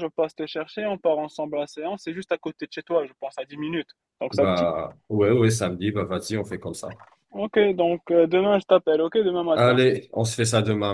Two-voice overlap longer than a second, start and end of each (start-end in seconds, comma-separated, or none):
none